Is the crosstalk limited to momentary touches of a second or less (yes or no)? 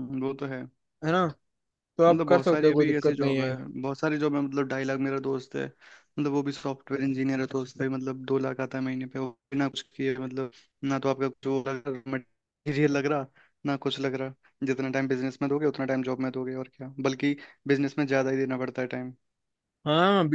no